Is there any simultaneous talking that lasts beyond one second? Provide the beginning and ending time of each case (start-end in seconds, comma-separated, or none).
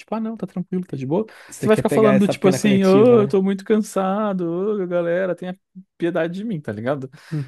1.5-3.4